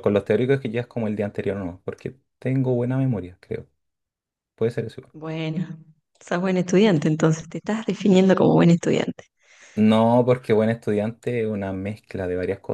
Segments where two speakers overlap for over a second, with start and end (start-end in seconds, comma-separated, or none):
none